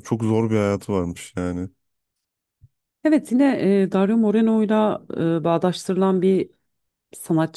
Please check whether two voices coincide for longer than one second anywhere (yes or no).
no